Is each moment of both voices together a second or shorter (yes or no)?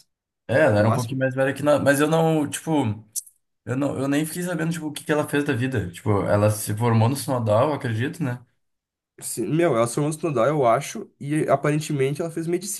yes